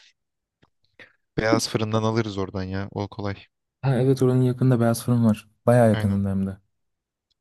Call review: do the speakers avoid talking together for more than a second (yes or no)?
yes